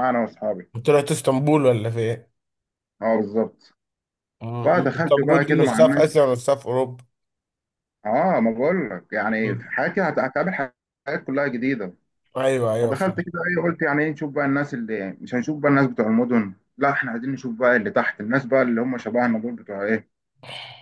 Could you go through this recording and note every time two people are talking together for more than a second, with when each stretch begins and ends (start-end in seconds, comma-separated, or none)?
4.6-6.2